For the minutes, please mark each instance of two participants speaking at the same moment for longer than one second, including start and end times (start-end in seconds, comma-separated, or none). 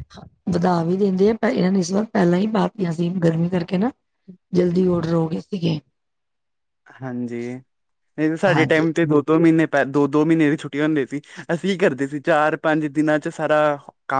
none